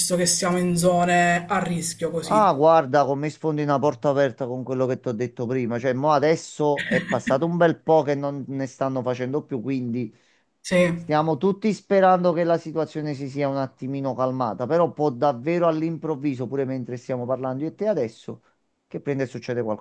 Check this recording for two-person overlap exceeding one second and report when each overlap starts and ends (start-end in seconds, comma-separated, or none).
none